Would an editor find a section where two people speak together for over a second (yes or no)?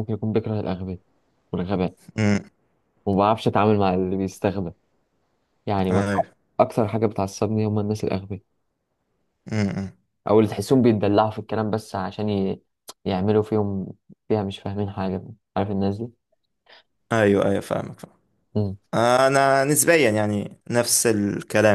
no